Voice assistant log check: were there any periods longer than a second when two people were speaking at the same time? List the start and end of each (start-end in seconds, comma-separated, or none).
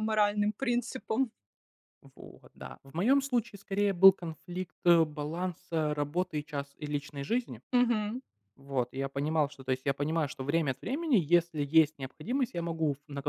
none